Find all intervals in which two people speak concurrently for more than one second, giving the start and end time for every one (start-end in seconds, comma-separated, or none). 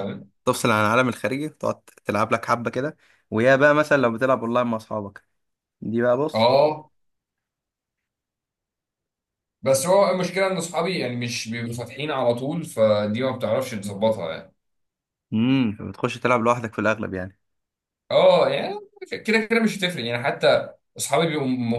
none